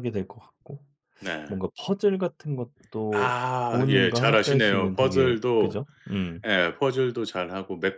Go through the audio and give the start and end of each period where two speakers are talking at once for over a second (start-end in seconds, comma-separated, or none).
3.2-5.8